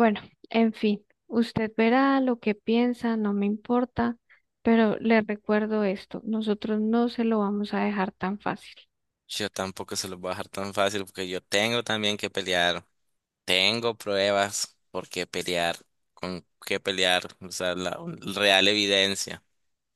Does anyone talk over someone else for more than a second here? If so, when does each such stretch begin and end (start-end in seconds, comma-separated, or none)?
none